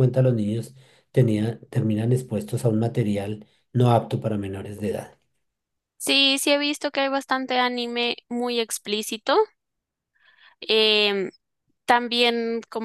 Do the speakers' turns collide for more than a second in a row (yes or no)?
no